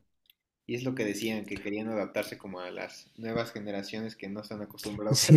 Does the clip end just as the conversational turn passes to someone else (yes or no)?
yes